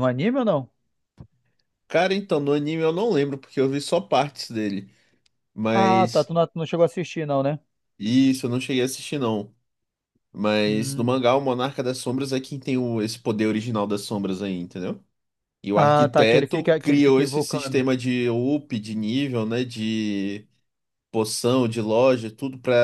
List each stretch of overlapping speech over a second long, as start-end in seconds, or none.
15.8-17.9